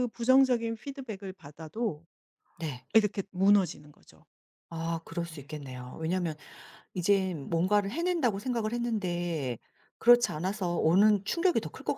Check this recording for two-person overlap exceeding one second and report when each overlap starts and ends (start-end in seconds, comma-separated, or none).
none